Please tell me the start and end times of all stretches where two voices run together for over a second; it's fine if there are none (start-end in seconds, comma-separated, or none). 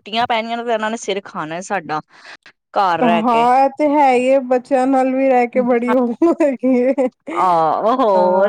none